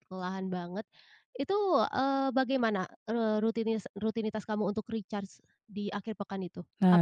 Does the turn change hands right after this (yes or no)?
yes